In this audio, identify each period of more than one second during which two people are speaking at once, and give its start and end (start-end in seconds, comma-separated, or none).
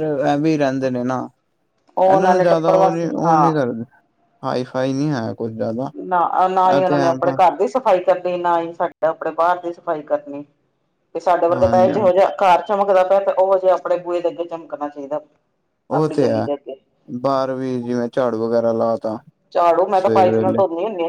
2.1-3.5